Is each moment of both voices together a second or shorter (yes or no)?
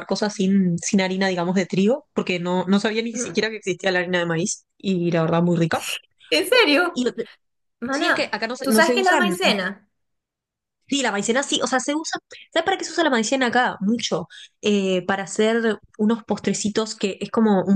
no